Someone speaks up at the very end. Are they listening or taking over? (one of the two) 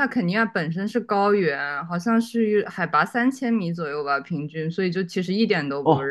taking over